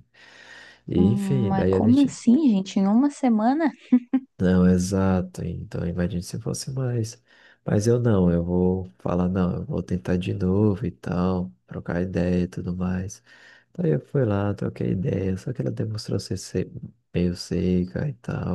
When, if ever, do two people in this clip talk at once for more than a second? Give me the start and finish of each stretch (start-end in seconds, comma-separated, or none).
0.9-2.2